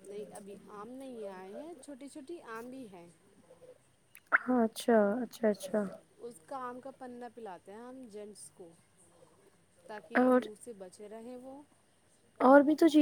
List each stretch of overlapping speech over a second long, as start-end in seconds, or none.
none